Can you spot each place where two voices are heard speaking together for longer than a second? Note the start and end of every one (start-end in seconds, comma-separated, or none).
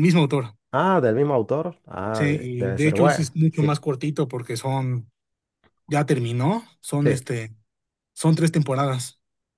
2.1-3.8